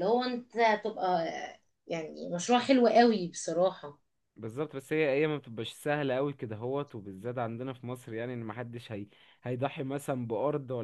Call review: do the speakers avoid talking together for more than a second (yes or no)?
yes